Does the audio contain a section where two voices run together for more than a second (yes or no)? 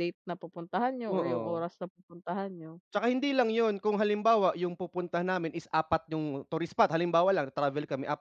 no